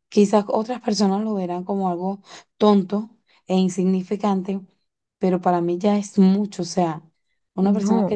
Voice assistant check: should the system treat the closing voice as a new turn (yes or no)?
no